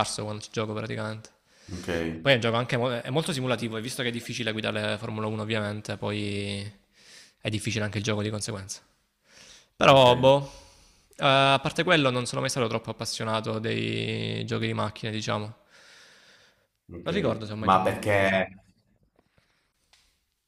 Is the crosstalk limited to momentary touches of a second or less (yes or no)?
no